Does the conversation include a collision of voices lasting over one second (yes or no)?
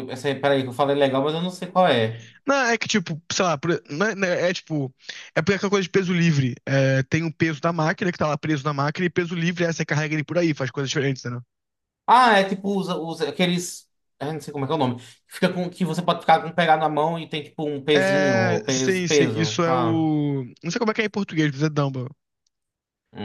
yes